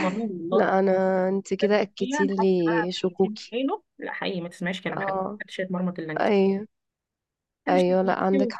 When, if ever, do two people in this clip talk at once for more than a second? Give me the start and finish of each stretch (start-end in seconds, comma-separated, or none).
1.6-3.5